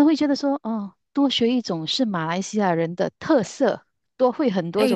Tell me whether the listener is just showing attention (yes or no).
no